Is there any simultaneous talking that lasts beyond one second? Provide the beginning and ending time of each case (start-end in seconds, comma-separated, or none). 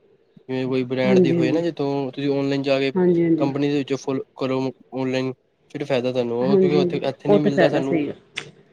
6.5-8.0